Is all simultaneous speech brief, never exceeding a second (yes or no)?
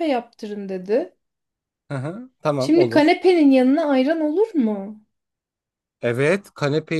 yes